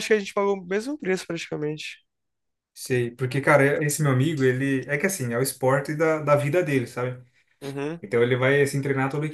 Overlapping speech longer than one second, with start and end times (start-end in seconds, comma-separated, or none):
none